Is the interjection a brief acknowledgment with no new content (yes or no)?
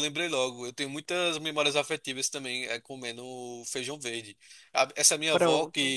yes